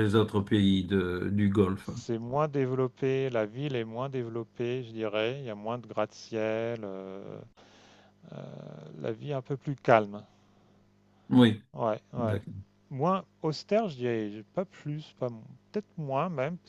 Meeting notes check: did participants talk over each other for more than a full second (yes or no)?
no